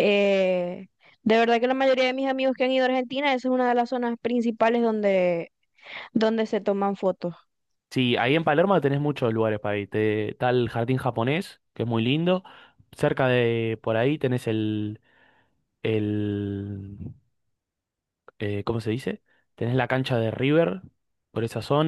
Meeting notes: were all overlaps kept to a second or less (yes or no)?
yes